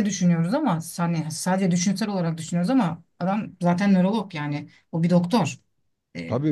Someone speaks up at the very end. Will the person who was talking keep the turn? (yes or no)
no